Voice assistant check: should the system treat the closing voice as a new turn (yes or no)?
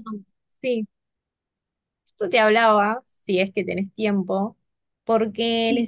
no